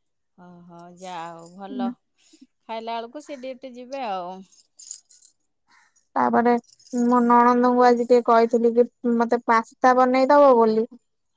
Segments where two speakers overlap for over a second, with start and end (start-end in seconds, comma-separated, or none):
none